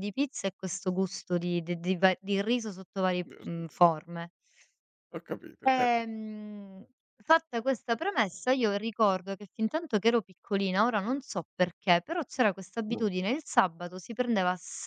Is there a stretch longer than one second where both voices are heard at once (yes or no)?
no